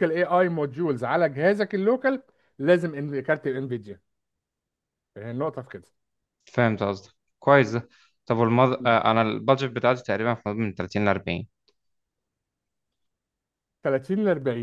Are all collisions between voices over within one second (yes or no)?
yes